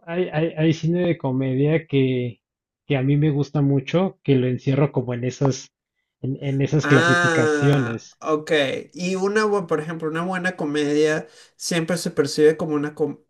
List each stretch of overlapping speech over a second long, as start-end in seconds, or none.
6.8-8.2